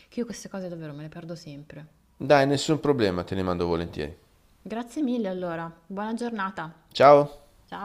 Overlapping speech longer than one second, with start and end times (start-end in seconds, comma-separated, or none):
none